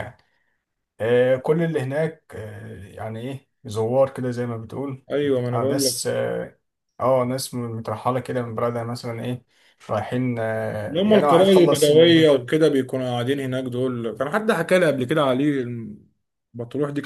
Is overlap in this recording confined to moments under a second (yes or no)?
no